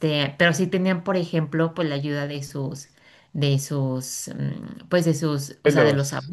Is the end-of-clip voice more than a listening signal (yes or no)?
no